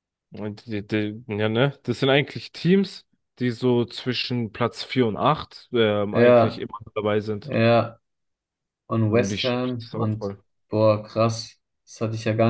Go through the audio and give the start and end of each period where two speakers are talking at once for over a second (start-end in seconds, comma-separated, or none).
9.1-10.3